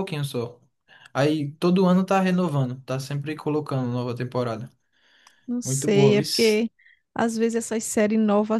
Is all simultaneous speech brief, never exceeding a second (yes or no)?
yes